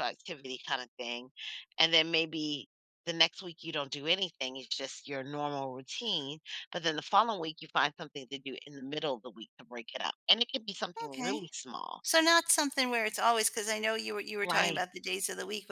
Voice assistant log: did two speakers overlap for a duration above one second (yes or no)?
no